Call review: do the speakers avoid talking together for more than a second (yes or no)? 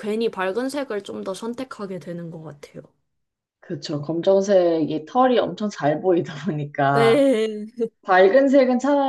yes